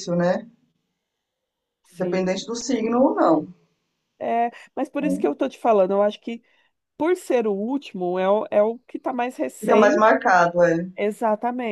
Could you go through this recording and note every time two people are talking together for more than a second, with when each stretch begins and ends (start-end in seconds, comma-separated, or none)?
none